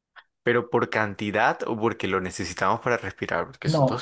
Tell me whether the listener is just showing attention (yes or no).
no